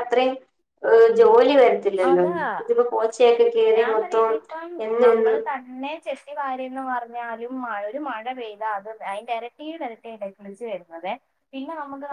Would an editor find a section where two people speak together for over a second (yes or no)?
no